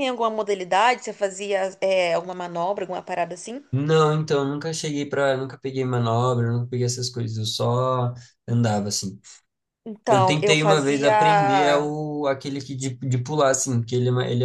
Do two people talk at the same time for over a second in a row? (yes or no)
yes